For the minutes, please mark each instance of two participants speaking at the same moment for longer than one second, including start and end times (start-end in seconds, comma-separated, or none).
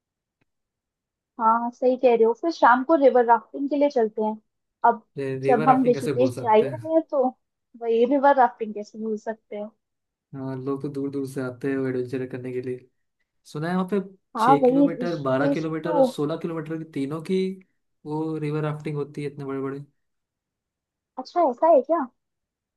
5.5-6.9, 14.4-16.1